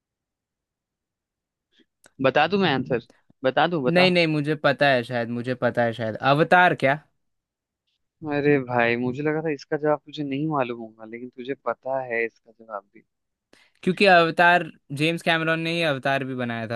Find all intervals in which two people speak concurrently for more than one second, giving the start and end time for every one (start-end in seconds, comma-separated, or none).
none